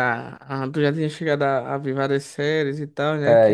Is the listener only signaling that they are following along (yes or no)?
no